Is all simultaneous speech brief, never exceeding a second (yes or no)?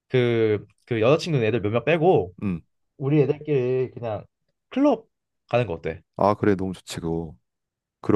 yes